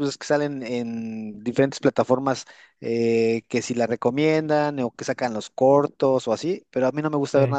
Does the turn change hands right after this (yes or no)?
no